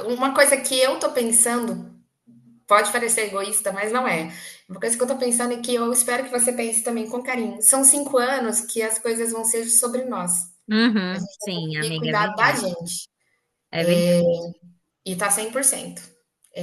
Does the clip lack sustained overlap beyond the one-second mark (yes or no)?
no